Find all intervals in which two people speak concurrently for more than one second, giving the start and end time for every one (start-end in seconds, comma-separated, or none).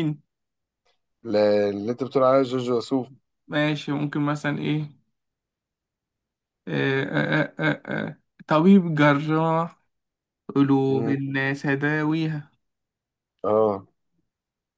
none